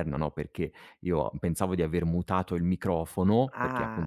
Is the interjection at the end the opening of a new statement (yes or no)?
no